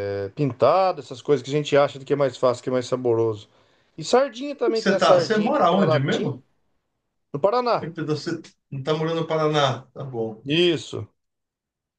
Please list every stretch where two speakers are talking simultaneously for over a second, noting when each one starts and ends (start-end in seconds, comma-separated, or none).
4.8-6.4